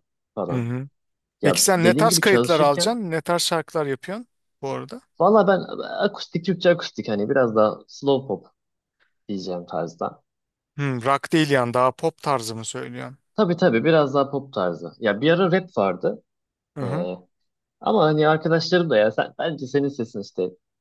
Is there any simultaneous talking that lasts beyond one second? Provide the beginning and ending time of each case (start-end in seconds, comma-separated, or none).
1.4-3.0